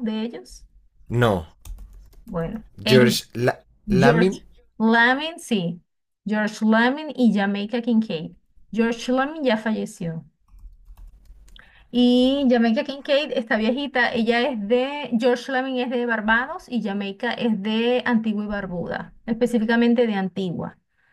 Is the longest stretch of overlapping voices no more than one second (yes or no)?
yes